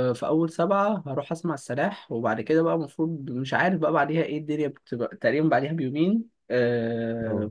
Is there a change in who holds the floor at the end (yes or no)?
no